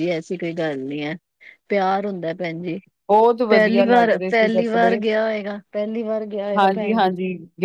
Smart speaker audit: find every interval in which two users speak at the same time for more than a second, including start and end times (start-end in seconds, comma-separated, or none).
3.5-5.0